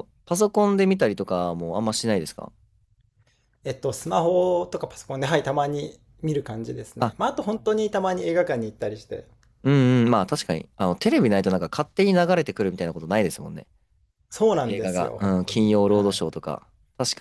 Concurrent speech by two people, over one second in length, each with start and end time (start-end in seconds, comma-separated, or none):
14.7-16.2